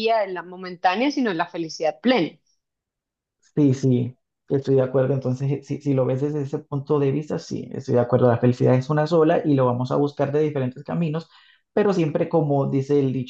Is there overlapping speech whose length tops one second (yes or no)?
no